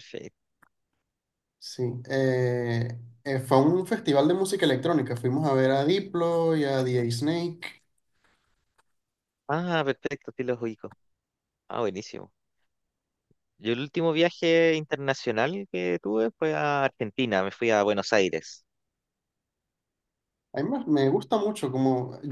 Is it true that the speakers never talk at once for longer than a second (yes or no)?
yes